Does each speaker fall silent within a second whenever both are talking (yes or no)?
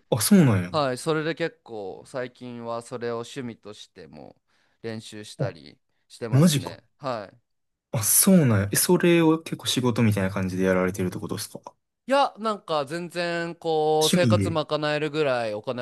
yes